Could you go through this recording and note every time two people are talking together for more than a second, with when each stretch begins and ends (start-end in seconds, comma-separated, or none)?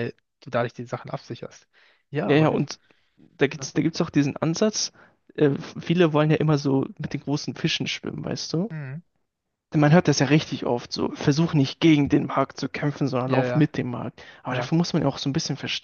none